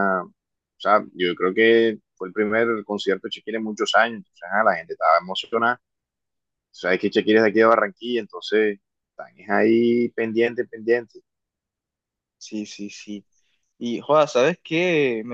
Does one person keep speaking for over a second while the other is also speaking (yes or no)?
no